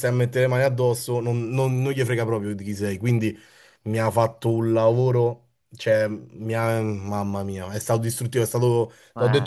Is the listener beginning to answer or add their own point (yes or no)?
no